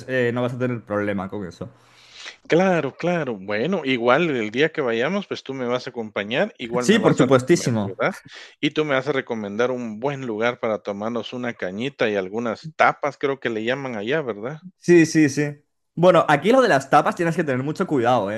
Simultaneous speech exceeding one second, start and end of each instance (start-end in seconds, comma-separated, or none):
6.8-8.0